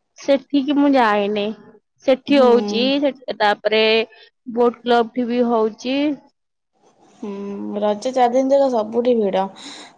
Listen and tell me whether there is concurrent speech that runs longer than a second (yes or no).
no